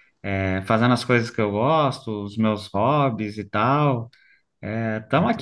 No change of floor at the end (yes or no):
no